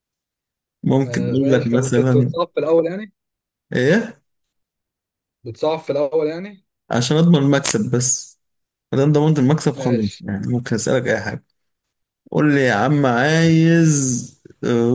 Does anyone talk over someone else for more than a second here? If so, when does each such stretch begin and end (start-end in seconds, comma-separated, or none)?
1.0-2.3